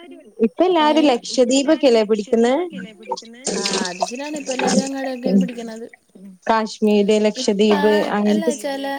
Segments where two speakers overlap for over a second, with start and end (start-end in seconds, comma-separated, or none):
0.9-2.5